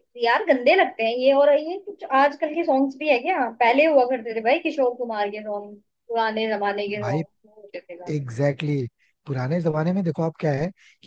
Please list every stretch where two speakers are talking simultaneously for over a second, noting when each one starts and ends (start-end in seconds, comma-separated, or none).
none